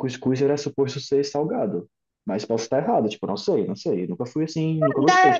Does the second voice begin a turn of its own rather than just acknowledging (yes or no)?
yes